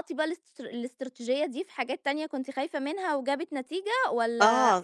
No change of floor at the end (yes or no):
no